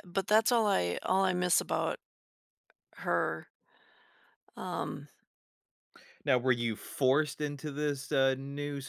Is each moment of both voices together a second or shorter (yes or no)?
yes